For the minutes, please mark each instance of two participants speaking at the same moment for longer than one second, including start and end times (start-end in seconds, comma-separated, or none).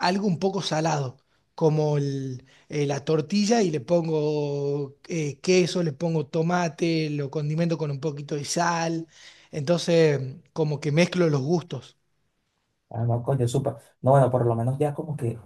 none